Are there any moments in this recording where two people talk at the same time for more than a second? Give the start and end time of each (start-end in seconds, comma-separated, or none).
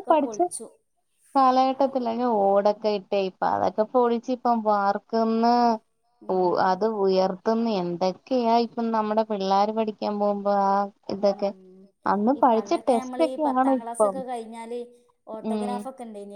12.4-14.2